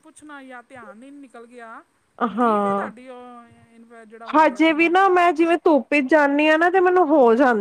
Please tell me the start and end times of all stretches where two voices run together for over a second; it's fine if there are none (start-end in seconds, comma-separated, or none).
none